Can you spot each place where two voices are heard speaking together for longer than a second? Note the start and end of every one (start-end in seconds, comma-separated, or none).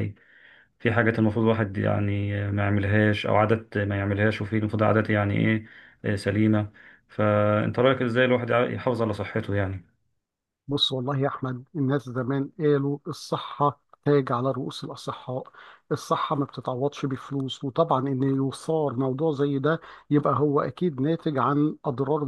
none